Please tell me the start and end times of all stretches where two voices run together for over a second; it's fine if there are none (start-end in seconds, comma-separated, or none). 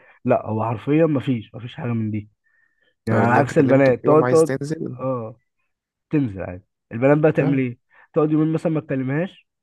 3.1-4.5